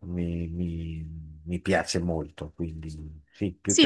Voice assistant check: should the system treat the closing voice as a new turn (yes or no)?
yes